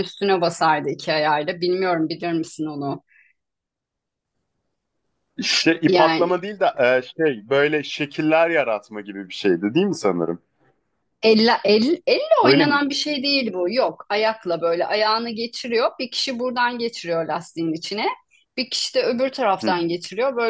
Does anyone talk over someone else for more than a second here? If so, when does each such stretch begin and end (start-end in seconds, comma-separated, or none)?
none